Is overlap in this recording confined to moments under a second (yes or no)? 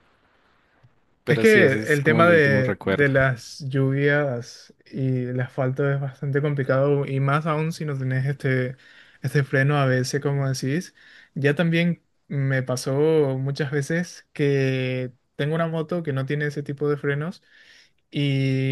no